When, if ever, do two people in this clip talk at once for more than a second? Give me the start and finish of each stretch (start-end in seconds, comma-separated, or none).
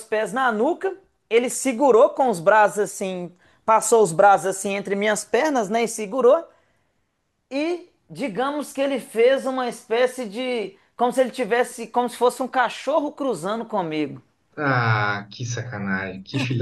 none